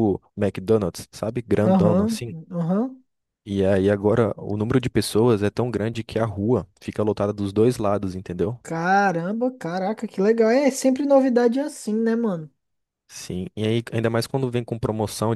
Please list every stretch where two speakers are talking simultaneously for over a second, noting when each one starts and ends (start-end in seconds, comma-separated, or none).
none